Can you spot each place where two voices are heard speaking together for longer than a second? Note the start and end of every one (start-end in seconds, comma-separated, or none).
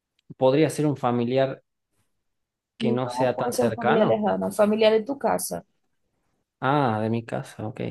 2.8-4.2